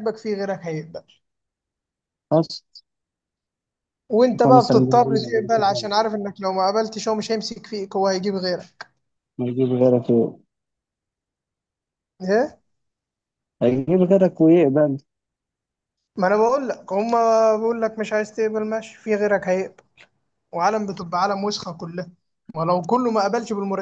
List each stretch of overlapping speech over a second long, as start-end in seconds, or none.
4.4-5.9